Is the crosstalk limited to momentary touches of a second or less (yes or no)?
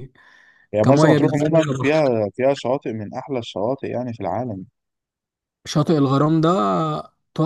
no